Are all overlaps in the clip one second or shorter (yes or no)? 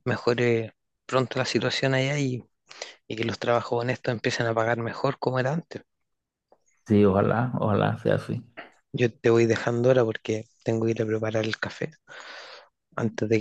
yes